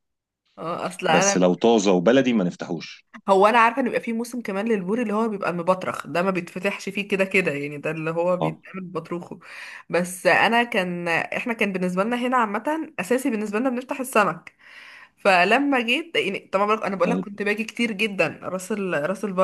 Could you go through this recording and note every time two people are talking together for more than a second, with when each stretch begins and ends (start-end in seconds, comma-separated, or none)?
none